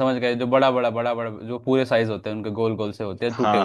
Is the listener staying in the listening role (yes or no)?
no